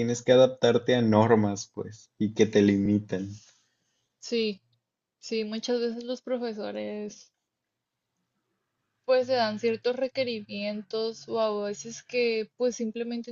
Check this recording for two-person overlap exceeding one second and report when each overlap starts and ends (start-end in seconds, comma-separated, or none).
none